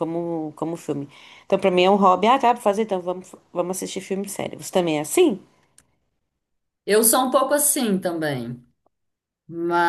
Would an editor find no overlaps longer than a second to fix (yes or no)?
yes